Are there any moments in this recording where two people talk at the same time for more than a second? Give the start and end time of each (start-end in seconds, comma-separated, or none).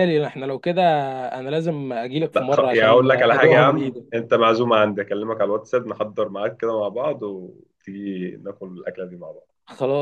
2.3-4.0